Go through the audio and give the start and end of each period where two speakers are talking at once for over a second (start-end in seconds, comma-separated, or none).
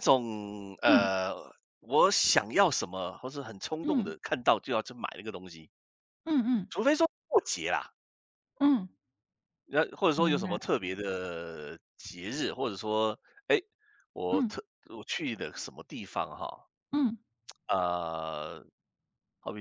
none